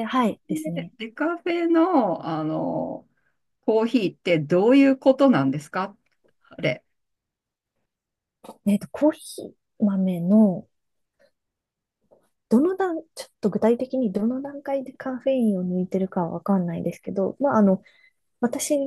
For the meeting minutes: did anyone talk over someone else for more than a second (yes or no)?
no